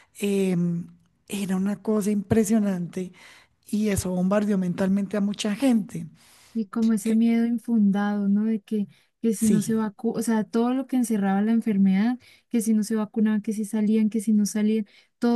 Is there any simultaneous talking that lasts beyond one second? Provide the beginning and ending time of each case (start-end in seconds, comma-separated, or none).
none